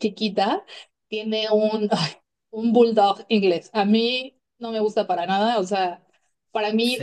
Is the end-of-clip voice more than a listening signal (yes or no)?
no